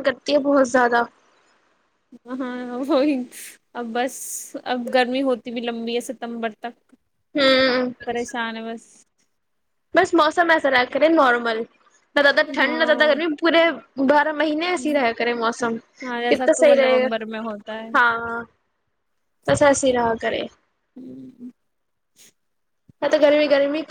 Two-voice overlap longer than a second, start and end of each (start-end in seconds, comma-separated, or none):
16.3-17.9